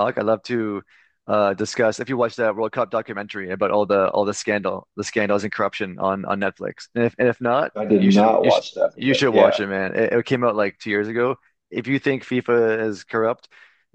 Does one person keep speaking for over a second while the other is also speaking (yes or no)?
yes